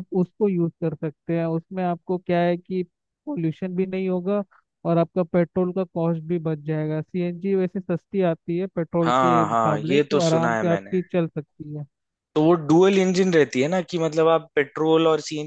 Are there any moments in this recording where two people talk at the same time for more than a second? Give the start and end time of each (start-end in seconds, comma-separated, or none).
9.0-11.0